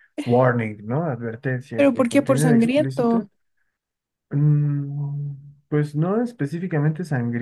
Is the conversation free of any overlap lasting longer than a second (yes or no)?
no